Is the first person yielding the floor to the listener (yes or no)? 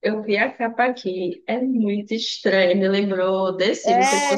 no